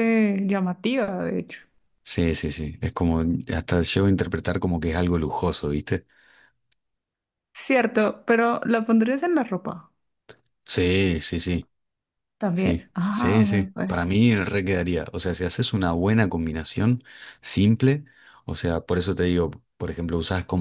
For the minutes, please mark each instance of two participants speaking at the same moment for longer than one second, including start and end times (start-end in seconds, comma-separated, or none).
12.5-14.1